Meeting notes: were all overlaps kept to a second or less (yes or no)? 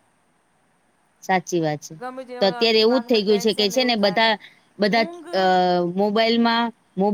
no